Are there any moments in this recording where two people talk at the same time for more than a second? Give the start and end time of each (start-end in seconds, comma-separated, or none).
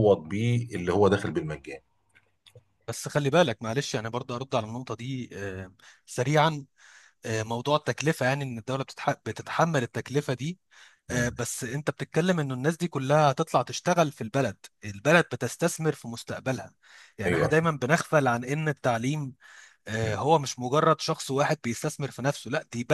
none